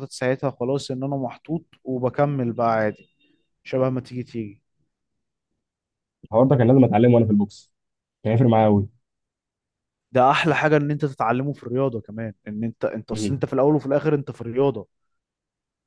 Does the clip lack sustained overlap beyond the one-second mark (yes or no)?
yes